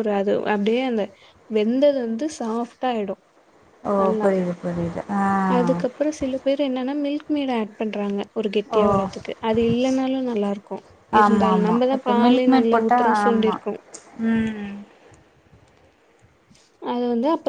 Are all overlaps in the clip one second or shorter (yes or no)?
no